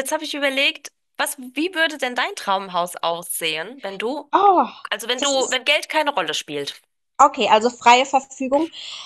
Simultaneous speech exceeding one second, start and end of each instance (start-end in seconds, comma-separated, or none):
none